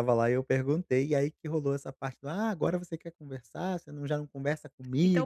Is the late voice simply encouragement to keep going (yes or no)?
no